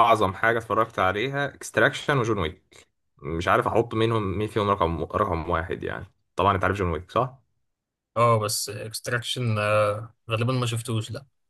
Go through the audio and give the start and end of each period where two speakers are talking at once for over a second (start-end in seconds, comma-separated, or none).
none